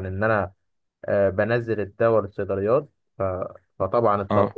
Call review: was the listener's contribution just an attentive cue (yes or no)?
yes